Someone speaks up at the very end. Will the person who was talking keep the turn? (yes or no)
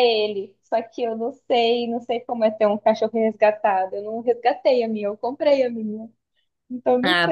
no